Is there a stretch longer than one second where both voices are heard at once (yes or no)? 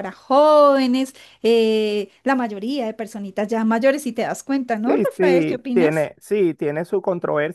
yes